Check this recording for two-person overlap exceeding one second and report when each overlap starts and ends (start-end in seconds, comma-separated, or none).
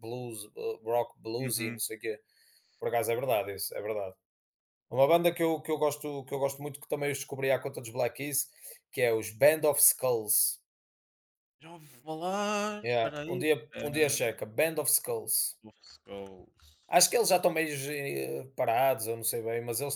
12.8-14.3